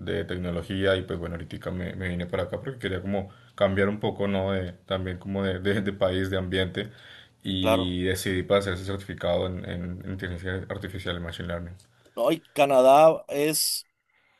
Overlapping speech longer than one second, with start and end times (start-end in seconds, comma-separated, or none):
none